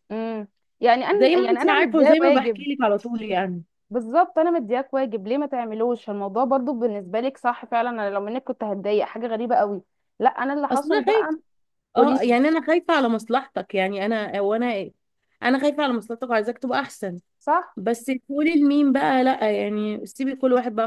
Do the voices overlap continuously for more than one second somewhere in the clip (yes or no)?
yes